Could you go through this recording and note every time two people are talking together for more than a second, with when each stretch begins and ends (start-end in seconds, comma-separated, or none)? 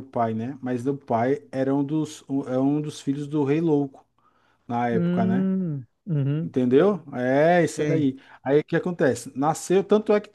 none